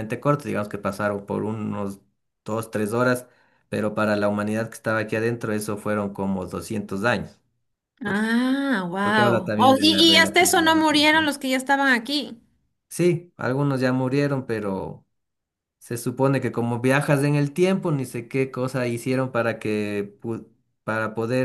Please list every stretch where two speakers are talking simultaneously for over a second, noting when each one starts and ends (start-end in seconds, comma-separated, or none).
9.0-11.3